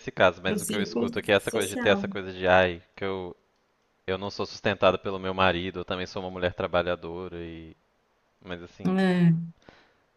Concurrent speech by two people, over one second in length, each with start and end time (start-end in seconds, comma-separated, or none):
0.5-2.2